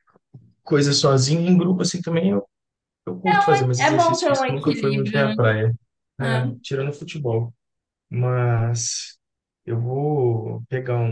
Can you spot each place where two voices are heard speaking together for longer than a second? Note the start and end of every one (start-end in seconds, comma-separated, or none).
3.8-5.3